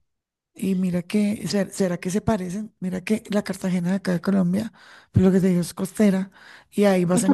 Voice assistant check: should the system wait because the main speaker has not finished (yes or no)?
yes